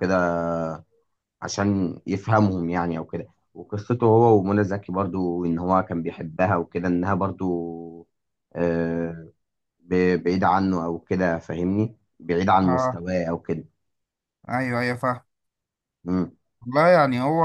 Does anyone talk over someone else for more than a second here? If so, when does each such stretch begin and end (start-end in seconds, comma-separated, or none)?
none